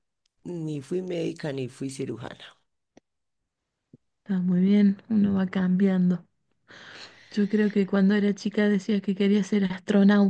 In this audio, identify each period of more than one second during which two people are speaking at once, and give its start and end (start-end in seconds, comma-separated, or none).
none